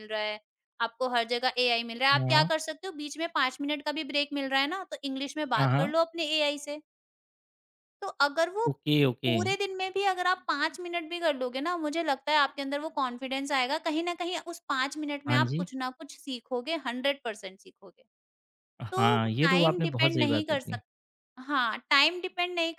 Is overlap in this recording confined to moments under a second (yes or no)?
no